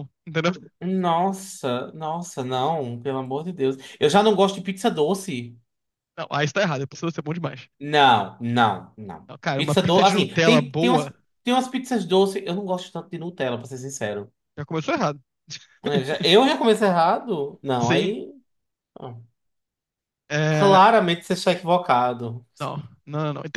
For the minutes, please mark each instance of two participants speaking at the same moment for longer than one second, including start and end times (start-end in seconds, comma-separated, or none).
9.3-11.1